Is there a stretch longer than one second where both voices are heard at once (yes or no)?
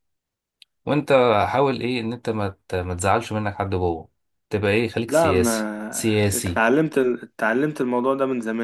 yes